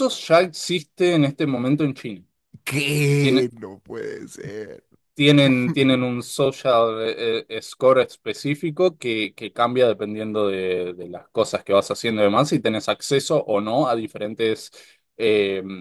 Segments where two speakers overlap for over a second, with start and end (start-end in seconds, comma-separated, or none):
none